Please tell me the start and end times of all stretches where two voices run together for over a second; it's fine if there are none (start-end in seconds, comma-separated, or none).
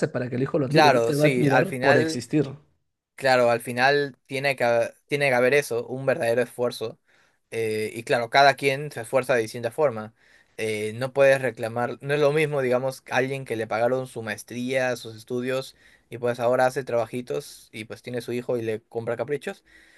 0.7-2.2